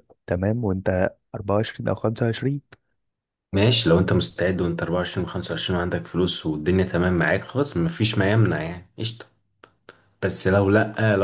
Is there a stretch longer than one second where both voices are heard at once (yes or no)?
no